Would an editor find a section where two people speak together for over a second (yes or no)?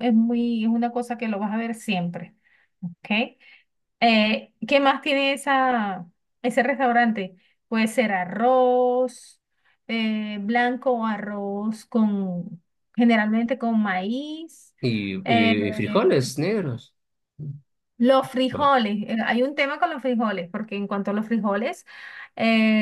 no